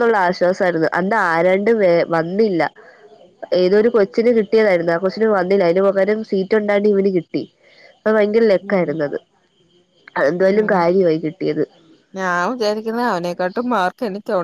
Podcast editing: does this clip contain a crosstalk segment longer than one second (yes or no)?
no